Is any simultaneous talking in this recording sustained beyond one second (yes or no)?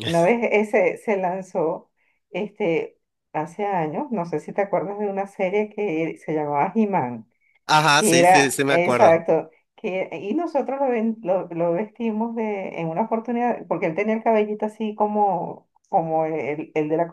yes